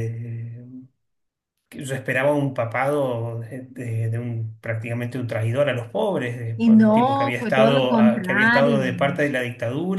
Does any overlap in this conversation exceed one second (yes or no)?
yes